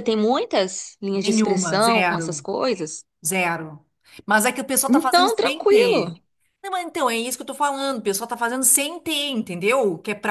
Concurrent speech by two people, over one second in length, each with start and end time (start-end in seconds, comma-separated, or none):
1.1-2.5, 4.9-6.1